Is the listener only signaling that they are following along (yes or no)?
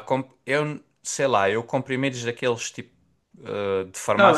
no